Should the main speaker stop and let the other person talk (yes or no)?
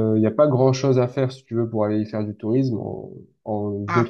no